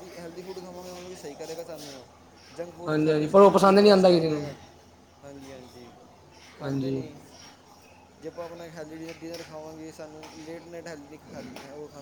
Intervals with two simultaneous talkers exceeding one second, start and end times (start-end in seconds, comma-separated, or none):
2.9-4.4